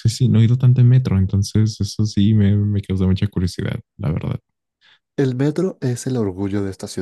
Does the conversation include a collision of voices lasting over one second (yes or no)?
no